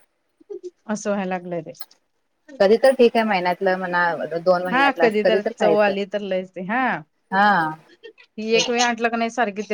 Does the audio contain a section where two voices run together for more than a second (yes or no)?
no